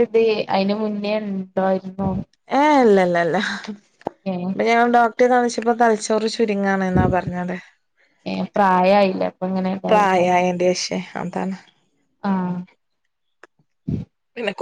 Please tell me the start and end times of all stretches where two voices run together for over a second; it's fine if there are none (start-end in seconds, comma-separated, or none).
none